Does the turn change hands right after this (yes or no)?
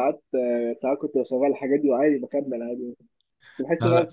no